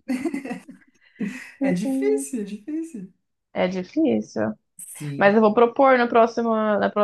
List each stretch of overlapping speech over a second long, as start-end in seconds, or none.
none